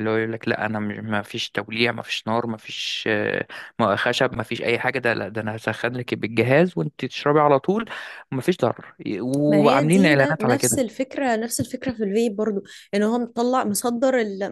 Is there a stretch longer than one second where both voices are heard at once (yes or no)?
yes